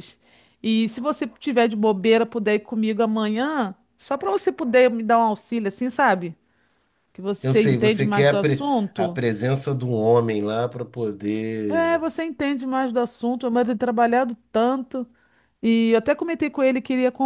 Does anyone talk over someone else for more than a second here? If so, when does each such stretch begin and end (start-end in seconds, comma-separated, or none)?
7.4-9.2